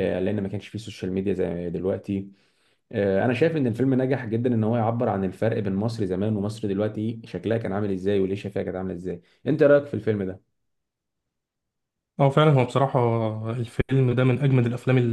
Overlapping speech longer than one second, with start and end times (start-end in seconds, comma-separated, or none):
none